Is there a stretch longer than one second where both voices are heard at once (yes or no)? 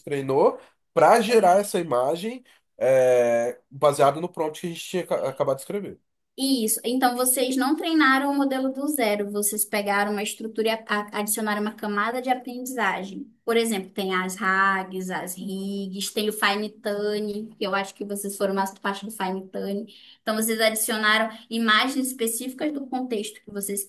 no